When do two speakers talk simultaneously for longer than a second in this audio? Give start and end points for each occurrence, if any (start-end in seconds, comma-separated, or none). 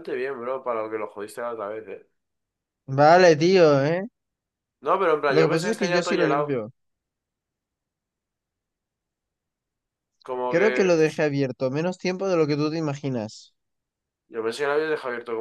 5.3-6.6